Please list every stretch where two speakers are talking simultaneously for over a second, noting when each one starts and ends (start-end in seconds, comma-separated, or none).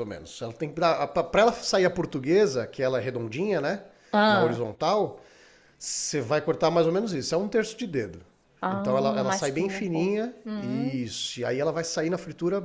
8.7-11.1